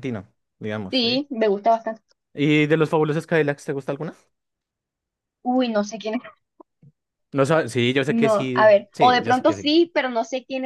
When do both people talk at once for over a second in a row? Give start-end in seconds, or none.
8.1-9.7